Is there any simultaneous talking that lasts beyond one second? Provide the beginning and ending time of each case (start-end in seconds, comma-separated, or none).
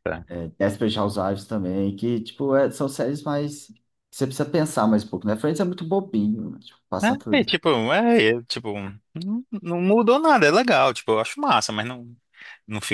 none